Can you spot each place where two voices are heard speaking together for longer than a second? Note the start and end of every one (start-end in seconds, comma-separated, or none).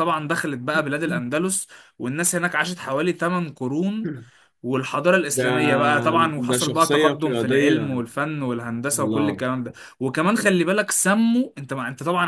6.4-8.0